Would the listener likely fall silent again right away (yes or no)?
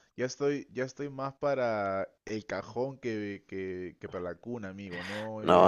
no